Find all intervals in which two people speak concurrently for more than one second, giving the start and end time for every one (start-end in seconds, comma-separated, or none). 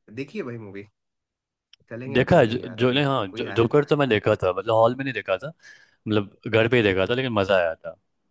2.1-3.7